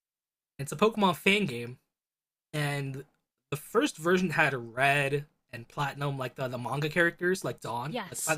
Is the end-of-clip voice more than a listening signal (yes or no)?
no